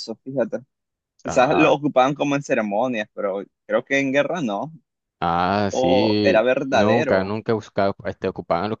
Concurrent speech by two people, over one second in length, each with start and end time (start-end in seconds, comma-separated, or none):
5.7-7.3